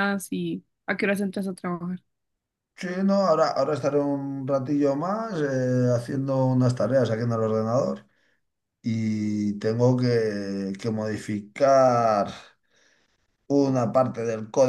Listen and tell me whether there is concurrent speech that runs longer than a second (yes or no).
no